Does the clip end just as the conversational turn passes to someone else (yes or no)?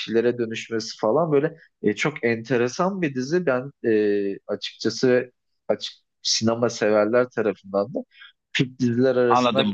yes